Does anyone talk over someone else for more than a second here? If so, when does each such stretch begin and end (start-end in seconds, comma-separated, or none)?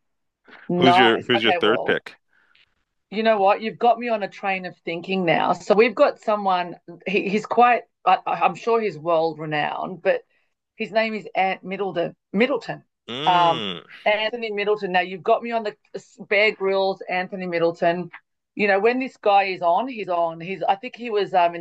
0.8-2.0